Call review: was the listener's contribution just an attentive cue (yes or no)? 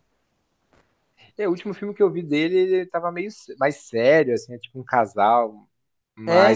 yes